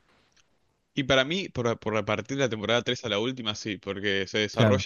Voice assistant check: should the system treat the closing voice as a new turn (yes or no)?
no